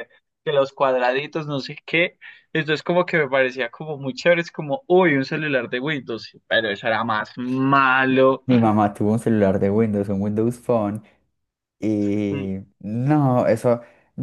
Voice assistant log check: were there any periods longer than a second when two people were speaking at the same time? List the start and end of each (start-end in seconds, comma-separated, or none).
none